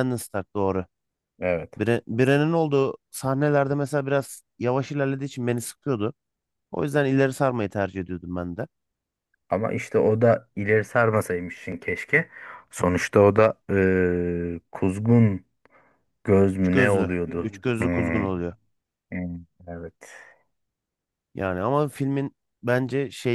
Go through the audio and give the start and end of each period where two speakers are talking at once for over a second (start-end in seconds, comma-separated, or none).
16.6-18.2